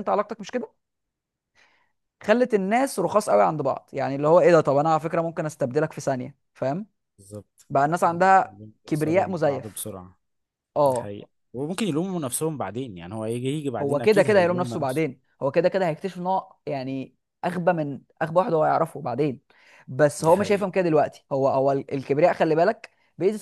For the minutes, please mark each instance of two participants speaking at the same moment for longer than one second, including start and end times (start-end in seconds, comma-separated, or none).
8.4-9.9, 13.8-15.0